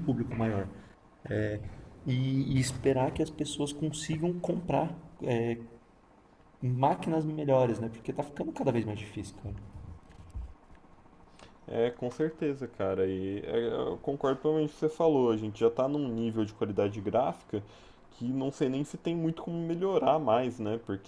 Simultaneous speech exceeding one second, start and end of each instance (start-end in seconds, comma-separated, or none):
none